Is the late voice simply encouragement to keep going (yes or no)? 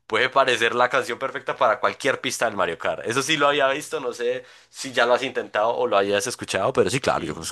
no